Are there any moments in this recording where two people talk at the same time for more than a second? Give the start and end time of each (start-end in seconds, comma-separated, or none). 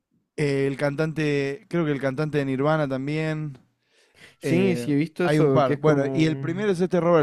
4.4-6.7